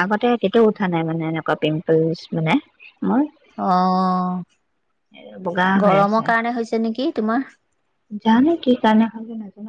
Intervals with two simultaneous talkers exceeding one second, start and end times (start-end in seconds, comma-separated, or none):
none